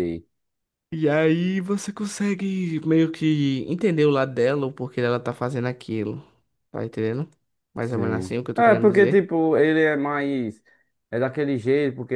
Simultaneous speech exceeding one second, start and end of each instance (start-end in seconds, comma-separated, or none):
7.8-9.3